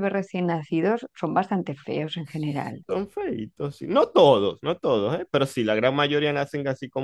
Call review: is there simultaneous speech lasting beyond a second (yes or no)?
no